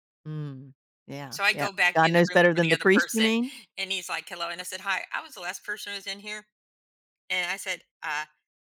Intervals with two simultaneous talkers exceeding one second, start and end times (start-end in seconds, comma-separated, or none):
1.3-3.3